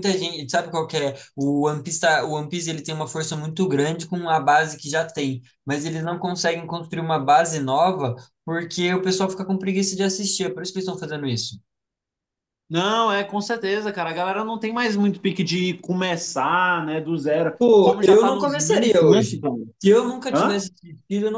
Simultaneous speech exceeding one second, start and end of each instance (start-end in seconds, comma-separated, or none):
17.6-19.4